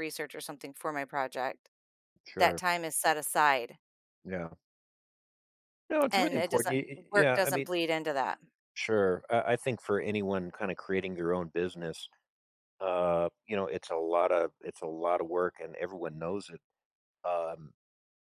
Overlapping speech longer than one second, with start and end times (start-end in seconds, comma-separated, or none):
6.1-7.7